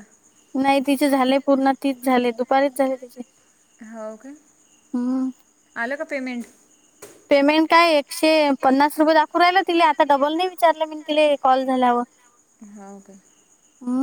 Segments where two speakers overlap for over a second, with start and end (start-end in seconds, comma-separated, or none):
none